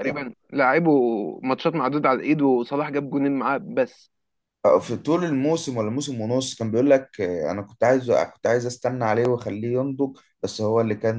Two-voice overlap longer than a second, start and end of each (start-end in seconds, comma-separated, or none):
none